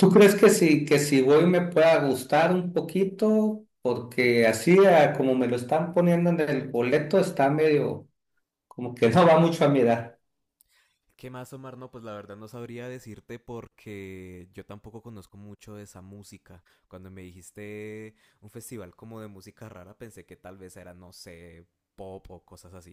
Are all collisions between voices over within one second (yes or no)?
yes